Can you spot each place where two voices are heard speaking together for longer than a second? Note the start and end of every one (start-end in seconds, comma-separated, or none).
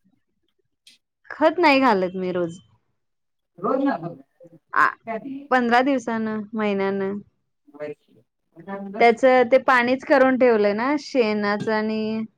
none